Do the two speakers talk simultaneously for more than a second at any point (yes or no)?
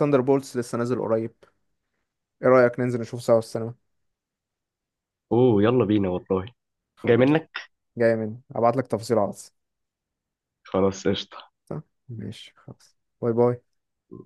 no